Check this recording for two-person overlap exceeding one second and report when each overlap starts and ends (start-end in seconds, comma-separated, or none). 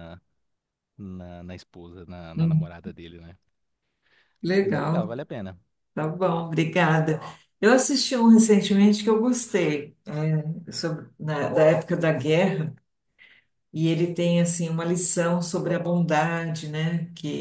none